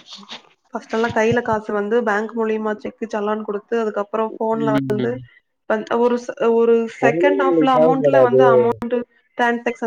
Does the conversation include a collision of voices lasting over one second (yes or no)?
yes